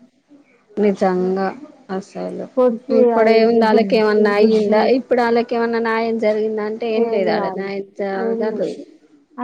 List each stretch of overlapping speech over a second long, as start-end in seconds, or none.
3.0-4.8